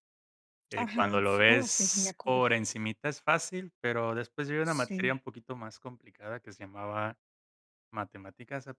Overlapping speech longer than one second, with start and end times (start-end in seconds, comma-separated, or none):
0.8-2.4